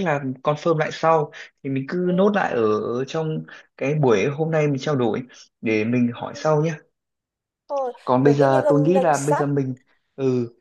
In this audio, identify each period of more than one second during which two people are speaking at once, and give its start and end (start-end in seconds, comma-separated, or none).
8.1-9.5